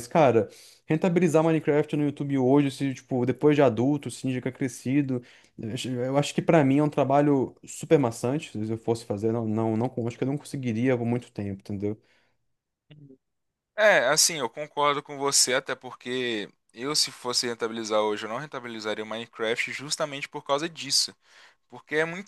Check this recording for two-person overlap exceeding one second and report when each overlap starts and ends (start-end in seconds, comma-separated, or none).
none